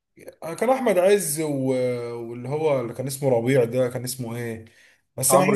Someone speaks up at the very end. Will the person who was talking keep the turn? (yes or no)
yes